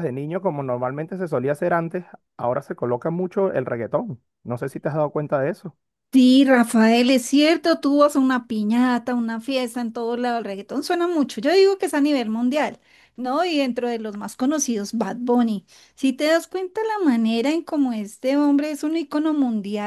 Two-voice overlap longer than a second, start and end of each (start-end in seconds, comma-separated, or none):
none